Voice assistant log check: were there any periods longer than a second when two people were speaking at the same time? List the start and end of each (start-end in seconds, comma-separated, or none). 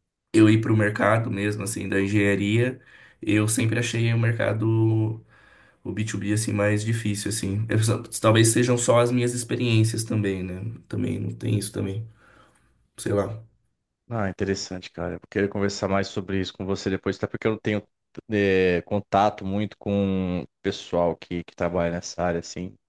none